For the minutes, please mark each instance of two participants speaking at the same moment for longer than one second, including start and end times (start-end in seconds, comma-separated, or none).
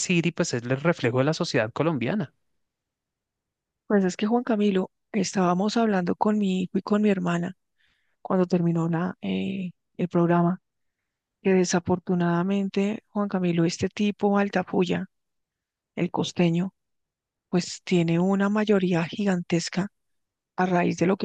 none